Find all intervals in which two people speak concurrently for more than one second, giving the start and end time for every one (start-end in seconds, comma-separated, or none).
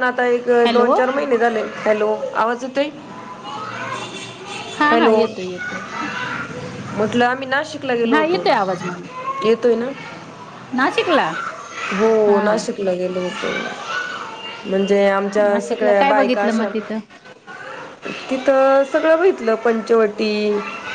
15.4-16.7